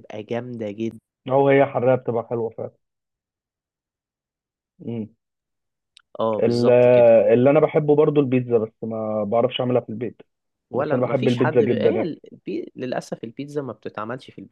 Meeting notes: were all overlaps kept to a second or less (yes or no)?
no